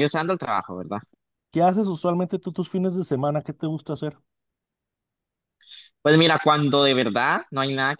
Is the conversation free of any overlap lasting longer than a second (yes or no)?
yes